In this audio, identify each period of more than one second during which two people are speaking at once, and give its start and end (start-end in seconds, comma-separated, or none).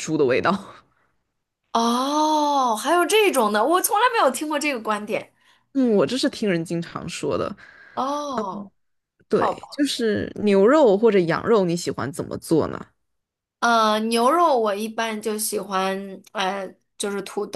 none